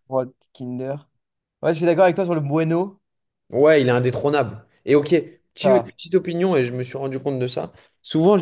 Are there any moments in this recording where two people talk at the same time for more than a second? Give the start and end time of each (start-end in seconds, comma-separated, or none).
none